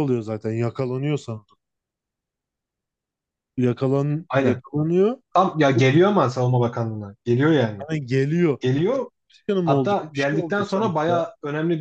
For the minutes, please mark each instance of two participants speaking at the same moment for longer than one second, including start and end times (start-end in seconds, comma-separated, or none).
9.6-11.2